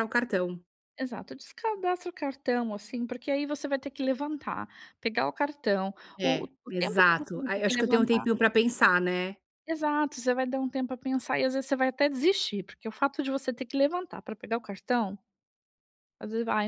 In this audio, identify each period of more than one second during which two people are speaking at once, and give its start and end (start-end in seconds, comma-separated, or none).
6.2-8.2